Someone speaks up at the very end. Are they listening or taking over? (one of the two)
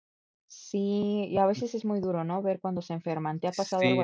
taking over